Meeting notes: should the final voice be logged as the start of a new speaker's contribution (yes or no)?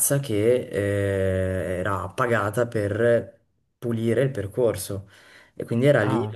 no